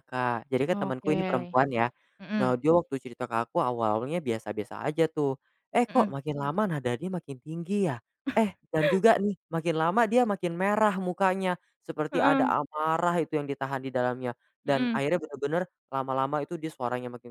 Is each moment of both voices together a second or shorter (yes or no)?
yes